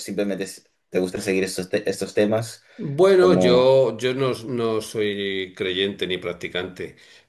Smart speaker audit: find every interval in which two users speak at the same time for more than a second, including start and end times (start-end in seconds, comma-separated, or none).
none